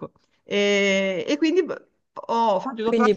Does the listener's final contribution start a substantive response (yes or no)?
yes